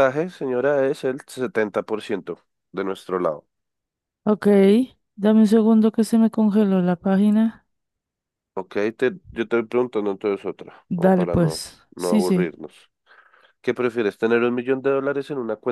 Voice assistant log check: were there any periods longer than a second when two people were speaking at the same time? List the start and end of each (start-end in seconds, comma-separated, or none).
10.9-12.5